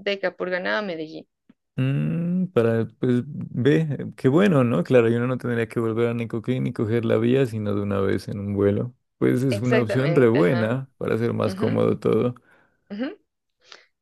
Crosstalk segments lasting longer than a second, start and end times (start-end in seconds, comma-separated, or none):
9.5-10.8